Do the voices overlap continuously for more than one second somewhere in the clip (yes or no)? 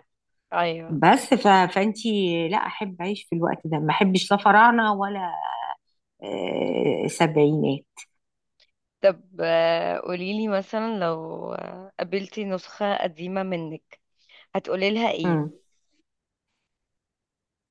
no